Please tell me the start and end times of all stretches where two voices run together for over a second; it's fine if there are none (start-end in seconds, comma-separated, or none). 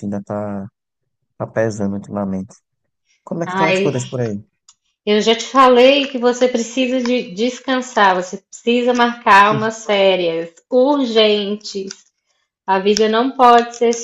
none